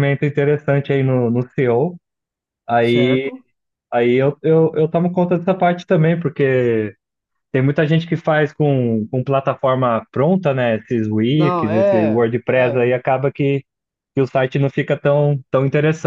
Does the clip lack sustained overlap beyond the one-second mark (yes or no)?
no